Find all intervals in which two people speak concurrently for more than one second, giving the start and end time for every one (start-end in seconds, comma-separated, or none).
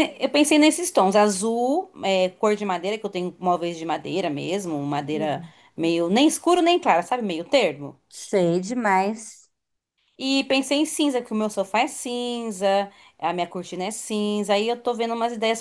none